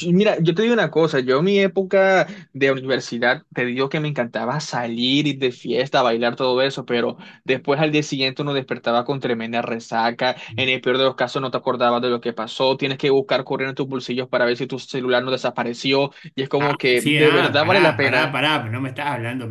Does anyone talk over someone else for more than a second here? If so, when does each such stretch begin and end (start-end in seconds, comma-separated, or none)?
16.6-18.4